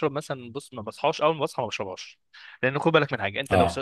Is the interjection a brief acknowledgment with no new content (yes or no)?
yes